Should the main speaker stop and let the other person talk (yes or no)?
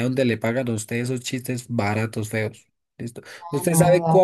no